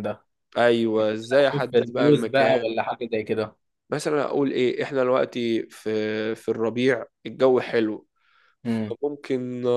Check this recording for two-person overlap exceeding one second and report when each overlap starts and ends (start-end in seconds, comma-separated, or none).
1.4-2.7